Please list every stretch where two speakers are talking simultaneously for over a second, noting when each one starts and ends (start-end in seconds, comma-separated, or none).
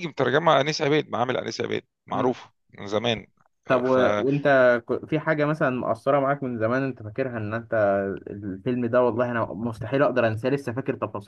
none